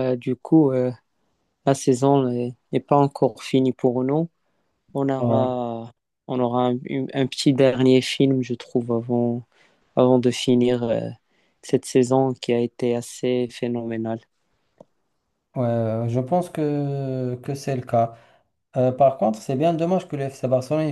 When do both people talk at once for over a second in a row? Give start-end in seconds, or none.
none